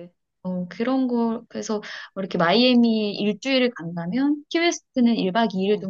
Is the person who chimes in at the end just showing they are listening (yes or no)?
yes